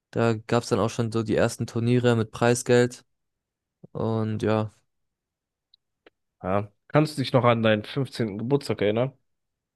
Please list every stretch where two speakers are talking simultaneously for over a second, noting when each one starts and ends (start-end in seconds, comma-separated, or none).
none